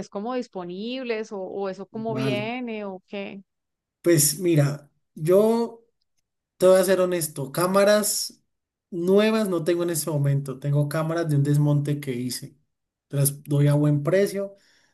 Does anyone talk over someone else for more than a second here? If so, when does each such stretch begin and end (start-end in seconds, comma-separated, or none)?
none